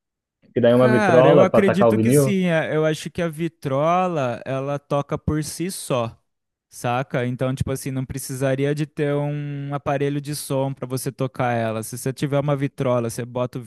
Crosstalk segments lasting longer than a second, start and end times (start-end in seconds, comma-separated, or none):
0.7-2.4